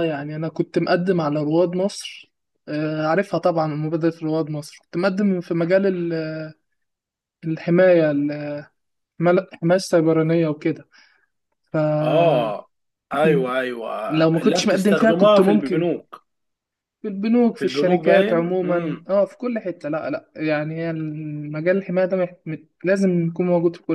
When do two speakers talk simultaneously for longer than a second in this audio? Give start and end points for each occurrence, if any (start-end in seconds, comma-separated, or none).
14.1-15.9, 17.6-19.0